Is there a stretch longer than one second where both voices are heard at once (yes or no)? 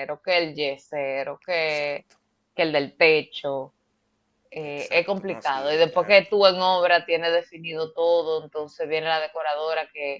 yes